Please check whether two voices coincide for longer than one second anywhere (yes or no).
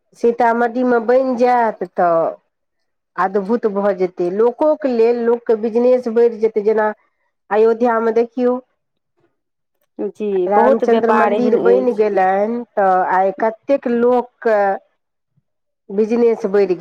yes